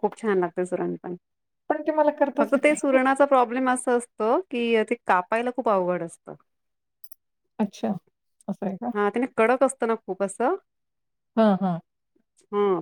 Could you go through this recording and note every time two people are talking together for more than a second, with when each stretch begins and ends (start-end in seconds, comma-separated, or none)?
none